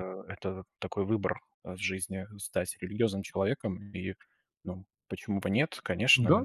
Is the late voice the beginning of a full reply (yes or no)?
yes